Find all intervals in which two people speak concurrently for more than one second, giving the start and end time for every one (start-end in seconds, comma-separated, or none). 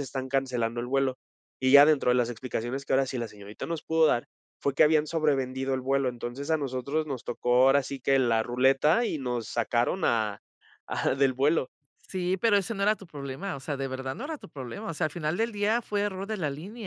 none